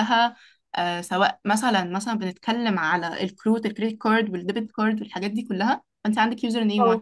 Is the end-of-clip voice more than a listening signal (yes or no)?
no